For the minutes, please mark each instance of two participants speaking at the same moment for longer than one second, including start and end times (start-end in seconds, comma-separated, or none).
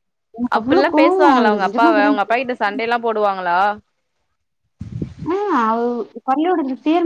0.6-2.1